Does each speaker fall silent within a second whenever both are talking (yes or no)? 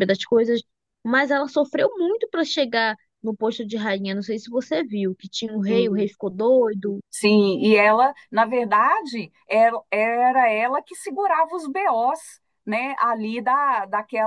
yes